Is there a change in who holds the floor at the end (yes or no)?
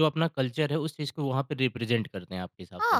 yes